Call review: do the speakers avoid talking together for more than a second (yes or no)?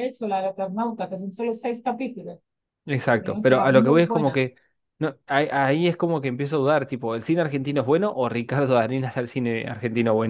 no